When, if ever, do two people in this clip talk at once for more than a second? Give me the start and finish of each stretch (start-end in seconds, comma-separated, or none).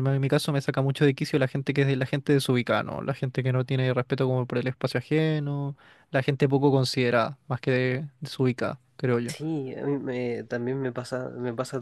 none